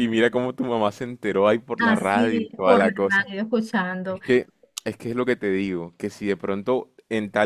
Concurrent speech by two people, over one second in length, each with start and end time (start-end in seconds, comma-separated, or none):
1.8-3.3